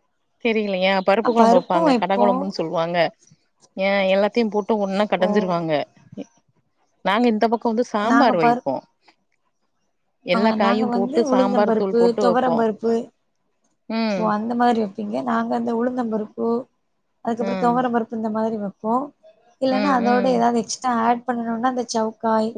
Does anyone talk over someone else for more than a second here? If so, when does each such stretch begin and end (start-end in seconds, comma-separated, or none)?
10.3-12.6